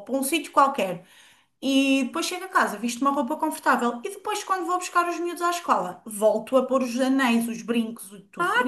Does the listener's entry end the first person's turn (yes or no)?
yes